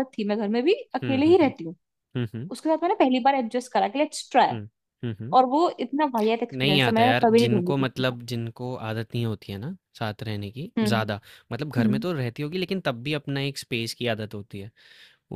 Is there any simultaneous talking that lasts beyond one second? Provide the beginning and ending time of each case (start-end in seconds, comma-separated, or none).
6.6-8.2